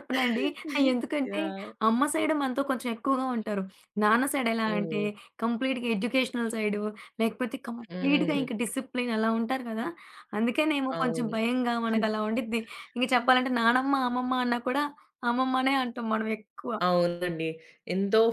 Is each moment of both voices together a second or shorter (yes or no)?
yes